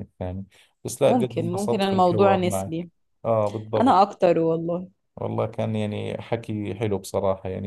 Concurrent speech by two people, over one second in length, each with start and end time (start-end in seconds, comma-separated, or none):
1.1-2.9